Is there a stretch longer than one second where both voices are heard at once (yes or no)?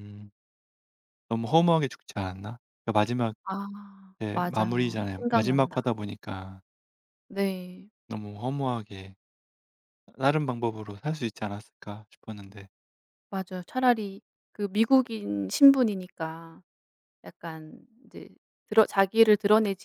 yes